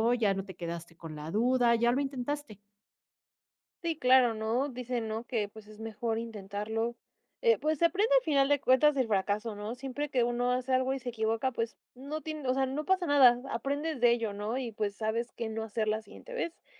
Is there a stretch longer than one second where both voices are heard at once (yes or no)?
no